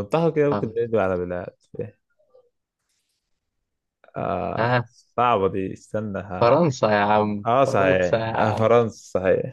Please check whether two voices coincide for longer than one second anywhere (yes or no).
yes